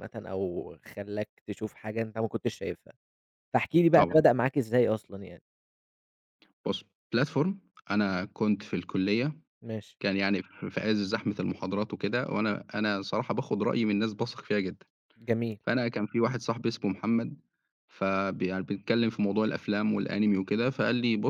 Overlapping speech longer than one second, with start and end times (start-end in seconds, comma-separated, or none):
none